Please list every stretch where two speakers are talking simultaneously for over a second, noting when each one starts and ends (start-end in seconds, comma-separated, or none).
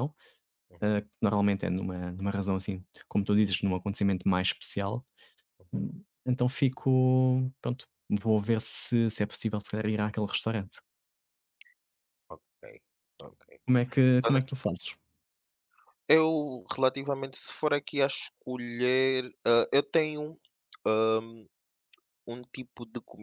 none